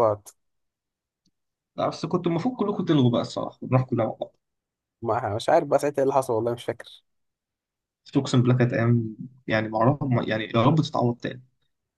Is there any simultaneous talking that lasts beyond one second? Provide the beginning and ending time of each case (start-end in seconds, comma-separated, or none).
none